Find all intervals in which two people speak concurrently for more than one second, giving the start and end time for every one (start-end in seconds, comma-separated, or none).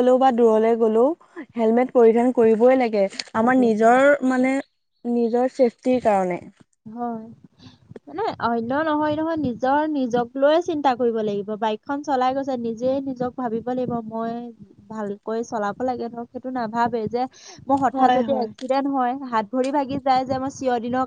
none